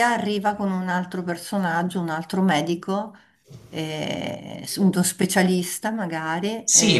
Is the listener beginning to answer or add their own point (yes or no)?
yes